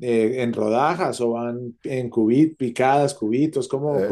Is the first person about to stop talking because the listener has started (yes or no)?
yes